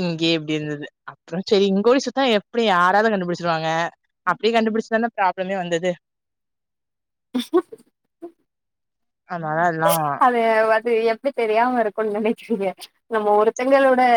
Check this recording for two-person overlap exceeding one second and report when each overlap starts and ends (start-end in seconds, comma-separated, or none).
none